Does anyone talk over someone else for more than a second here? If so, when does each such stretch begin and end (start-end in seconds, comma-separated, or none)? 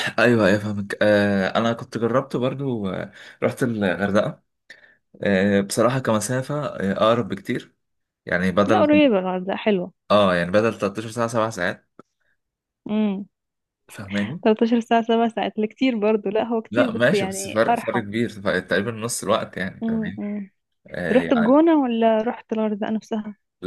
16.7-18.0